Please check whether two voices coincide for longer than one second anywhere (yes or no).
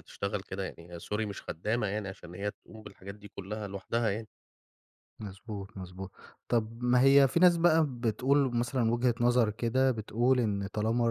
no